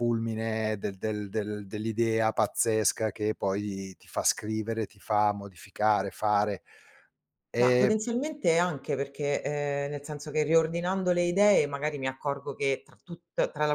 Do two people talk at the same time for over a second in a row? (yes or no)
no